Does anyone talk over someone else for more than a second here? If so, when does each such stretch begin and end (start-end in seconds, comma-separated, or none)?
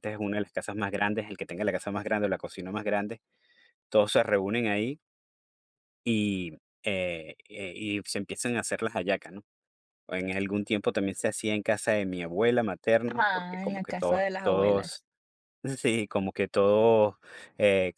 13.1-15.0